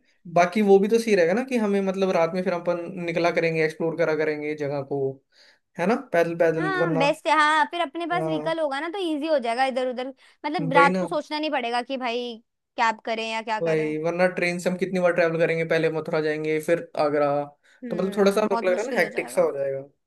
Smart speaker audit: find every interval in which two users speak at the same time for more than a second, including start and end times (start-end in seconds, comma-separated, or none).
17.9-19.5